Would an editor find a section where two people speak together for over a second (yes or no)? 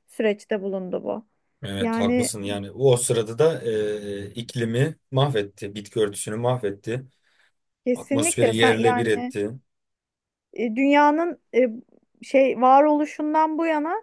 yes